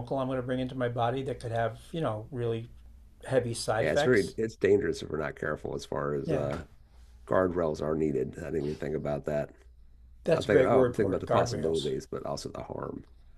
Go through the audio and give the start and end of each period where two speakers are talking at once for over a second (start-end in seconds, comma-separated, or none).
10.3-11.9